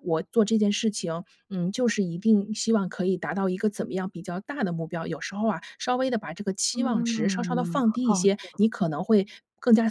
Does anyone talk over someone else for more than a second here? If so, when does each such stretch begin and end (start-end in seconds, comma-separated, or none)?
6.7-8.6